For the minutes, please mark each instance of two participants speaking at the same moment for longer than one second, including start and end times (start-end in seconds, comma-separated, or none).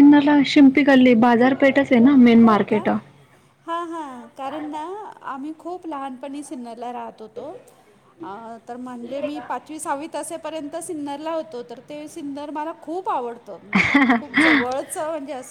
none